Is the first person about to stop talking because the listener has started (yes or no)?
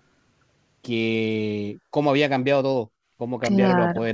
no